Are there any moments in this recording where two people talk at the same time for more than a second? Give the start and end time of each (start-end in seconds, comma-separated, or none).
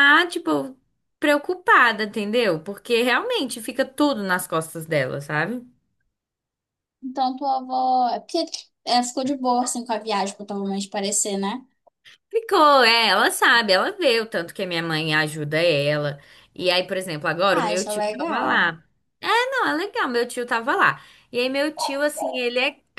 17.5-18.7